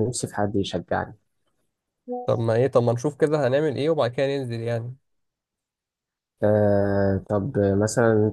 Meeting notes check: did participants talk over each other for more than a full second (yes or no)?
no